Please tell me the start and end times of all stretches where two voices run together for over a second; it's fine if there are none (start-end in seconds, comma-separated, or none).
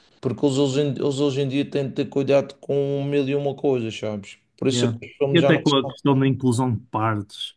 4.7-6.3